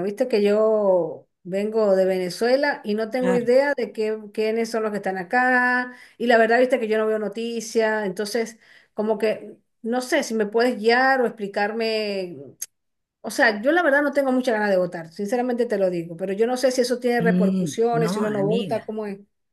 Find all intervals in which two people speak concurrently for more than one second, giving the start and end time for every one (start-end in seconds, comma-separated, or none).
17.2-19.0